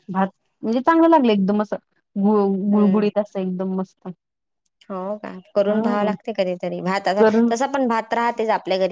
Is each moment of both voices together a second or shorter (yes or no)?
yes